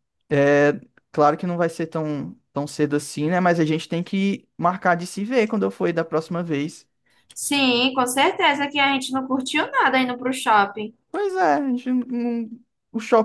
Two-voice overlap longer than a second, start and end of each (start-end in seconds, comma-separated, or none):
none